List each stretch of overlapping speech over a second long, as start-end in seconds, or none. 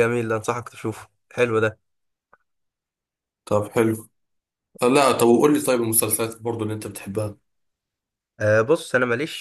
none